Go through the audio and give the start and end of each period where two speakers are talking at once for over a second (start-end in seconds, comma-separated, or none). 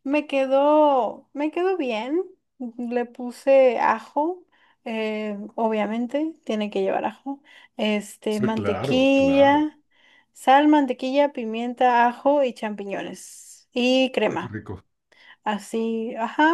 8.3-9.7